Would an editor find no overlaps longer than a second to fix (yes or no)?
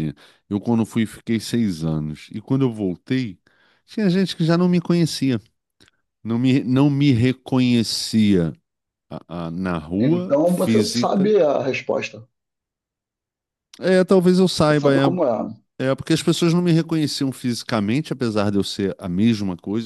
no